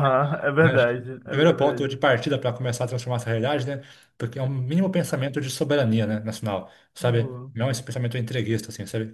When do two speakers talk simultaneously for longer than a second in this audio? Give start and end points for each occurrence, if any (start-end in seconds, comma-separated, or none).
0.6-2.0